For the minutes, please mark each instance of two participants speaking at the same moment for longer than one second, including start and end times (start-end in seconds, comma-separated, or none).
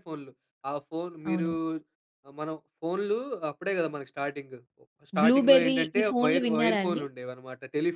5.2-7.0